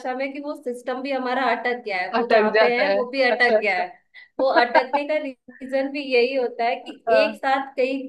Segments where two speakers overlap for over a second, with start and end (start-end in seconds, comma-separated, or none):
2.2-3.8